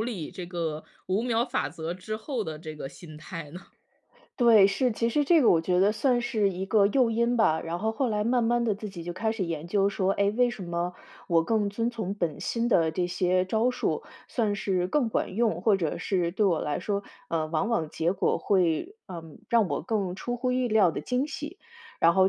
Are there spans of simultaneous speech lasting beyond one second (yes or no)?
no